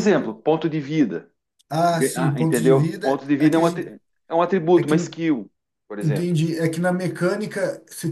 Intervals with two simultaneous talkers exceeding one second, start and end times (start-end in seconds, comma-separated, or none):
1.9-4.0